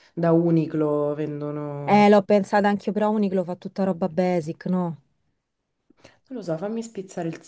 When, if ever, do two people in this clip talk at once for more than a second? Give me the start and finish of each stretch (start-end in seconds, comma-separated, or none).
none